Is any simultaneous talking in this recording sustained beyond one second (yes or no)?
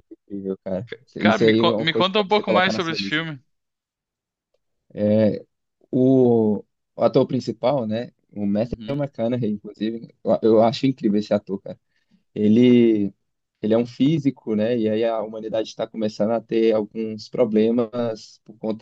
yes